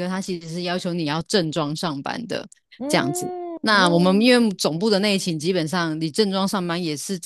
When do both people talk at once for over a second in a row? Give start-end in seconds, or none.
2.9-4.3